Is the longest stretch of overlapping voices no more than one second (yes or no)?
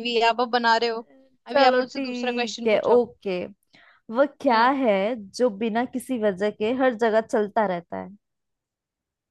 no